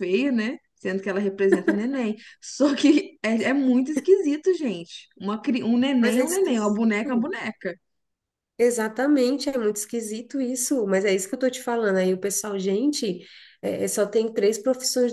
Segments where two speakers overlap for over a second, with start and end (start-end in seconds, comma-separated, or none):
6.0-7.3